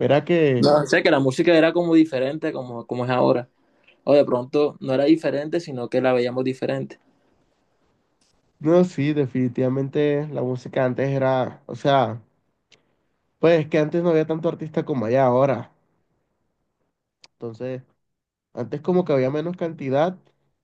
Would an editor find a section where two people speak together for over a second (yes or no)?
no